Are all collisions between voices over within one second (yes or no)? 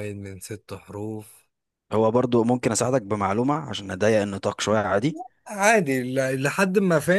yes